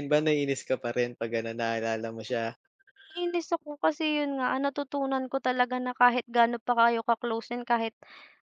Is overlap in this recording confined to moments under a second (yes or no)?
yes